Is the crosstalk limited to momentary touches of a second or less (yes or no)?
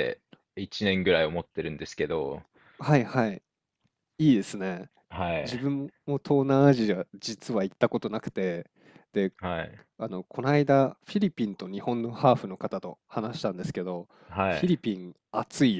yes